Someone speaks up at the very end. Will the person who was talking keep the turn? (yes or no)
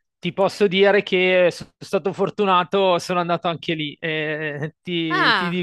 yes